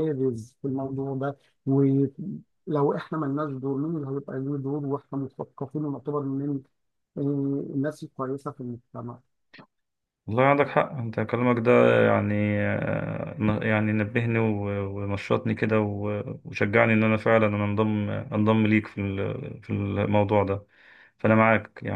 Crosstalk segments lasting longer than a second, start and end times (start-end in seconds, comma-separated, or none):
none